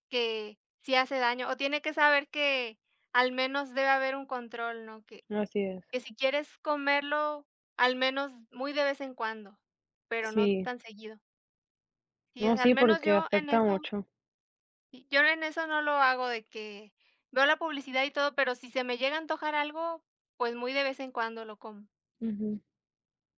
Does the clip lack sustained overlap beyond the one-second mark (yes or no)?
no